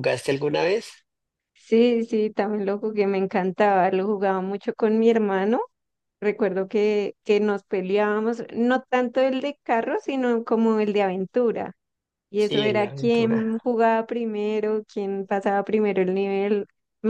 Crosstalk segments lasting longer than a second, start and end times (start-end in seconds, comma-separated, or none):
12.3-13.6